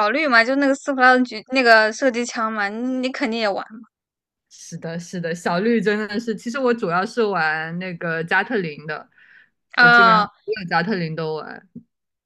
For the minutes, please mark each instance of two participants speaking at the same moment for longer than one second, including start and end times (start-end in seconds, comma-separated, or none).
none